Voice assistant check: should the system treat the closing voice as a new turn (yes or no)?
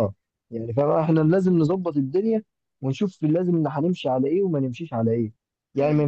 no